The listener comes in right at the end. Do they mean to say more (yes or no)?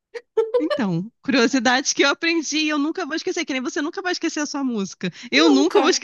no